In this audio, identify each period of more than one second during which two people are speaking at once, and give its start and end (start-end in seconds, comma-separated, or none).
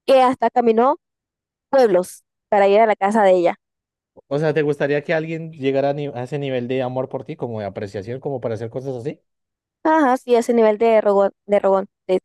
none